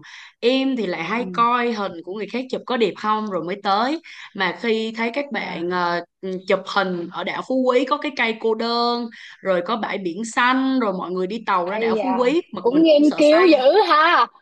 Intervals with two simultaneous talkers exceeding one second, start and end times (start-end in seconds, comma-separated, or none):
11.6-13.5